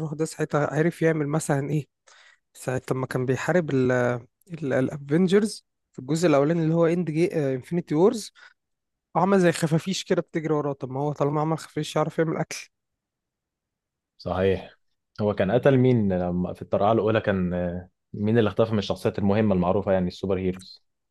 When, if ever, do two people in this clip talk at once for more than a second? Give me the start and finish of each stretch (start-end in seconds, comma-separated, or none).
none